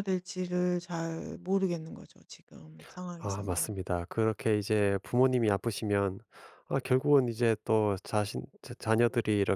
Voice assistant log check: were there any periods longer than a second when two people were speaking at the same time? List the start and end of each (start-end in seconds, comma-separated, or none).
none